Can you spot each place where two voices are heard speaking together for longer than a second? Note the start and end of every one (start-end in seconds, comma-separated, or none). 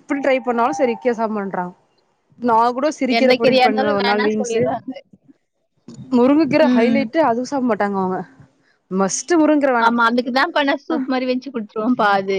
3.2-4.6